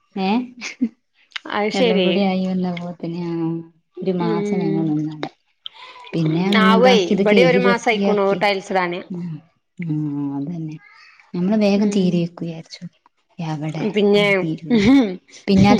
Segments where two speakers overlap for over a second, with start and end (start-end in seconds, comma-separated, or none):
6.7-8.4